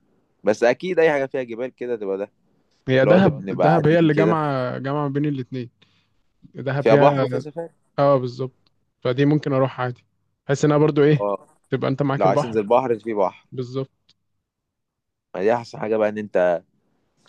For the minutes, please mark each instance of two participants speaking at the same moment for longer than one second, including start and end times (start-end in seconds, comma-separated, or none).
3.0-4.4